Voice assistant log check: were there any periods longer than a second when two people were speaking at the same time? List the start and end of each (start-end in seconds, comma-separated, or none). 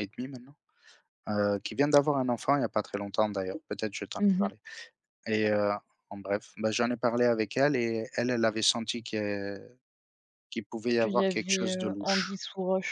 10.9-12.4